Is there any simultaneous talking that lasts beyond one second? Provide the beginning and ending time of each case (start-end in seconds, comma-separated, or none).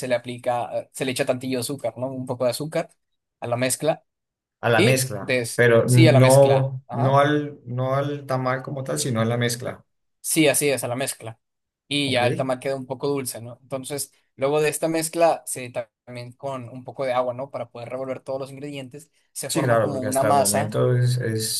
4.8-7.2, 19.5-20.8